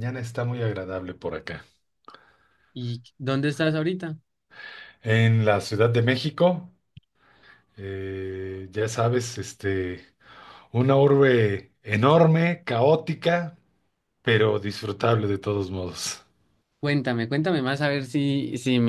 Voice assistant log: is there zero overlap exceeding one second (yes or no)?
yes